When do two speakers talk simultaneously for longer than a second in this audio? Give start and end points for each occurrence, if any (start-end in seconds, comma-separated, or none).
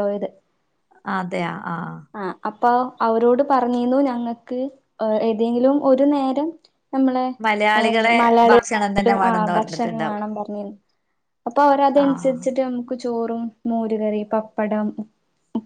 8.2-10.2